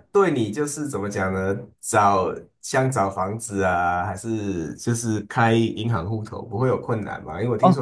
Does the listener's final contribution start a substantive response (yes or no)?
no